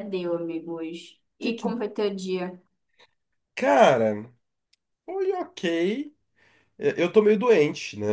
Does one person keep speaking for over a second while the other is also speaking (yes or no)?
no